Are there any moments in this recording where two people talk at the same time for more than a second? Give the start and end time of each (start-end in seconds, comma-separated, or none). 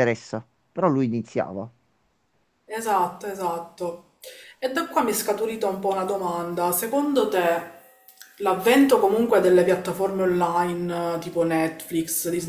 none